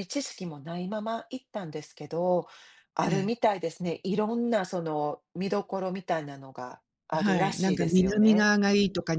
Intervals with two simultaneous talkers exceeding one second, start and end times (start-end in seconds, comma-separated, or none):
7.1-8.5